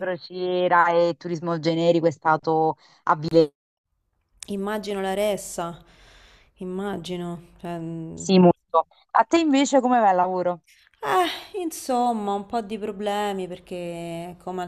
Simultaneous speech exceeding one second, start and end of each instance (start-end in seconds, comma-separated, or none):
none